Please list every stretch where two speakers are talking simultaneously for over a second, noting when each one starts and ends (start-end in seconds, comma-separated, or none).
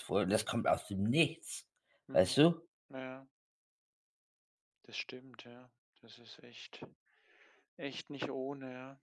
none